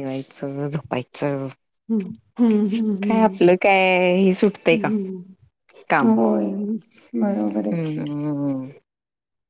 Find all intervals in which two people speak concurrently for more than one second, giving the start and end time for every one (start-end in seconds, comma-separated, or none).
none